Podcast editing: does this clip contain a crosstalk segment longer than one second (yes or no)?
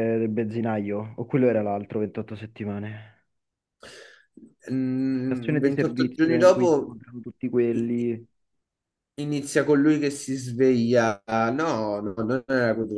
yes